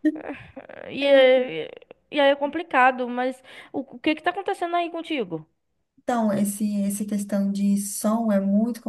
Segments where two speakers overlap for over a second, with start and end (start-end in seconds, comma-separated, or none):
none